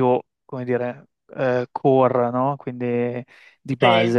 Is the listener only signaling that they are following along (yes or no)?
yes